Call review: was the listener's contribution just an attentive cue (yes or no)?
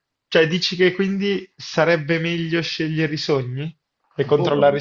no